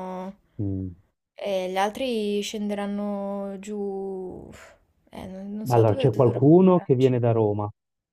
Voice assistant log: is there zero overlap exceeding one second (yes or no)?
no